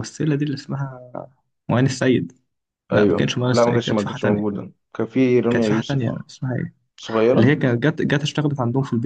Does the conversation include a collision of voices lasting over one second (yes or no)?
yes